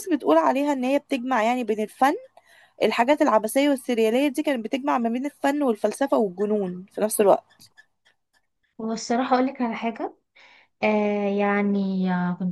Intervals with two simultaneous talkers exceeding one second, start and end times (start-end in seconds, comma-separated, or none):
none